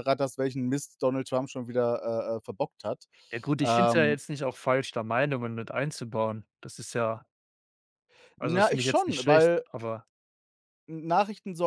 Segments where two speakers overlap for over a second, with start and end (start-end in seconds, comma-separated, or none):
8.4-9.6